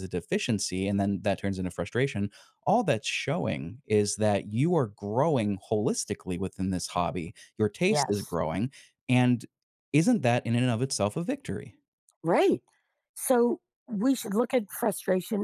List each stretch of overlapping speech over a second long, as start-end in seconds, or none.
none